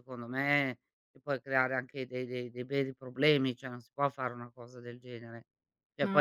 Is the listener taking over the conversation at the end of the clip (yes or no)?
no